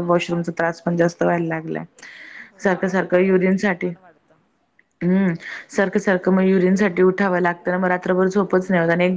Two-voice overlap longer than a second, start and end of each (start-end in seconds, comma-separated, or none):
2.6-3.9